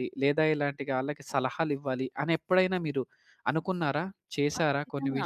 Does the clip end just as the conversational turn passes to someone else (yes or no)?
yes